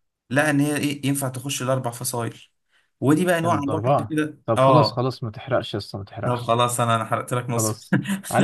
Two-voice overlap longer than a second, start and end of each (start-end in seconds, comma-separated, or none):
3.4-5.1